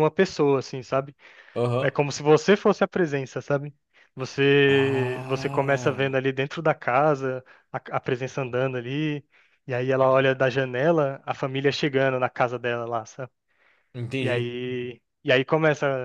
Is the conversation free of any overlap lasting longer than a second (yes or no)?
no